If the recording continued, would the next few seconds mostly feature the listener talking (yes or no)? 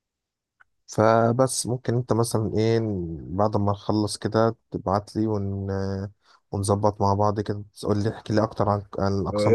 yes